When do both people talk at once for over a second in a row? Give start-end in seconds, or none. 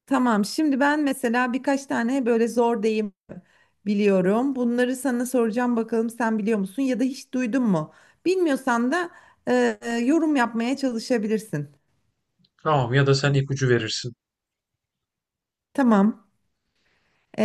none